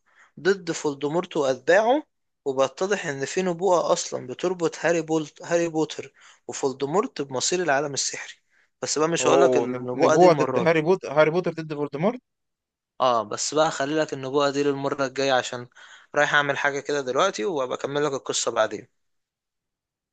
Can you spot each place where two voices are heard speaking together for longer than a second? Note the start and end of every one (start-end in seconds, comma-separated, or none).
9.2-10.7